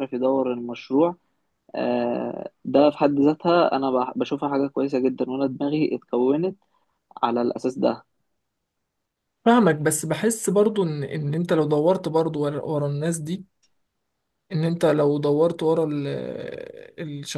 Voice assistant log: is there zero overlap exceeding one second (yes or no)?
yes